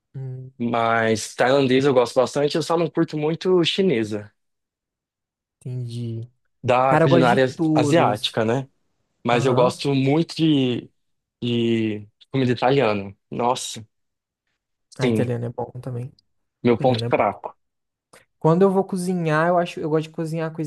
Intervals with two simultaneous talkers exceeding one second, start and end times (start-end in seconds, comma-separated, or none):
6.9-8.4